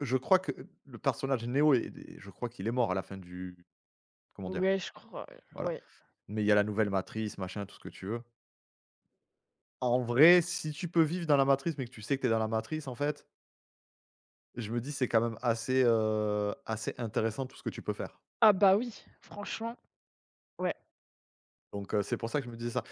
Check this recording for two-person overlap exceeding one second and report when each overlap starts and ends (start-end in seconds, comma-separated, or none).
none